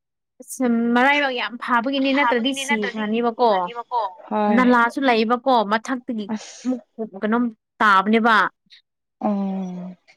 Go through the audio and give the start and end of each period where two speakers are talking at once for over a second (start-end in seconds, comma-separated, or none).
2.1-3.5